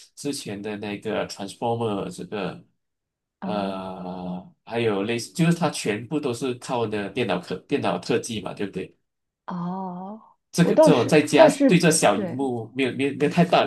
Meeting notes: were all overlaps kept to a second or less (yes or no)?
no